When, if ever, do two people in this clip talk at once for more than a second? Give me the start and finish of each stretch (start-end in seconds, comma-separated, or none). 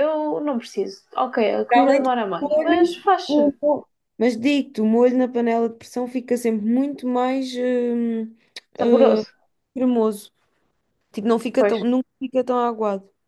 1.7-3.6